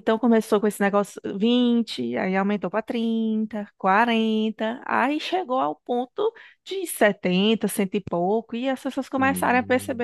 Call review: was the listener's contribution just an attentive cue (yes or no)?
no